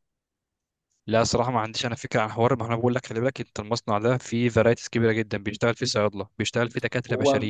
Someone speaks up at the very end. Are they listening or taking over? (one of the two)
listening